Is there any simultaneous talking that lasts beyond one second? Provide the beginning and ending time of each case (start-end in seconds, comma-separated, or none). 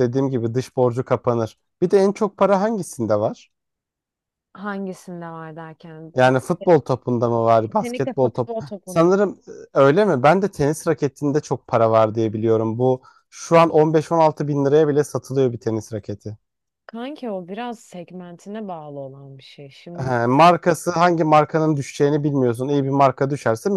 7.6-9.1